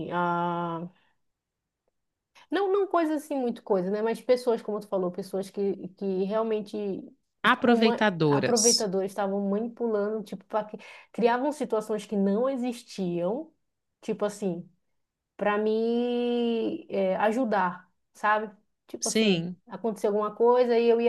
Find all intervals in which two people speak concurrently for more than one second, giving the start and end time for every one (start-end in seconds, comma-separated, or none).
7.4-8.9